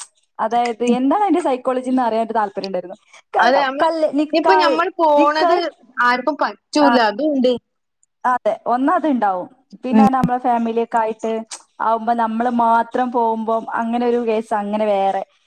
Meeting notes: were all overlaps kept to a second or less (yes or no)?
yes